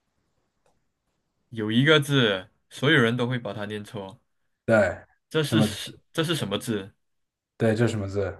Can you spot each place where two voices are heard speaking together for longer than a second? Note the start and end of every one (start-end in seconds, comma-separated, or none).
none